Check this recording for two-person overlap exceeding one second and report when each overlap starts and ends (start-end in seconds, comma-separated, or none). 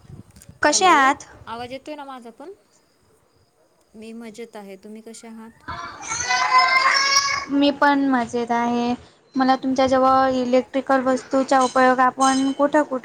none